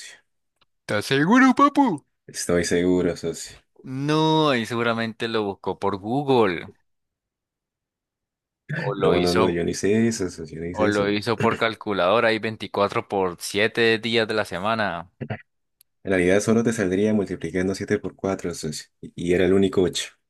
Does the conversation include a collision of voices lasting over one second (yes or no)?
no